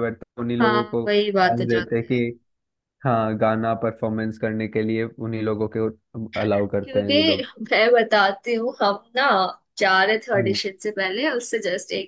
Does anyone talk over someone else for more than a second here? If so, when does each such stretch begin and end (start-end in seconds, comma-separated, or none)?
0.6-2.2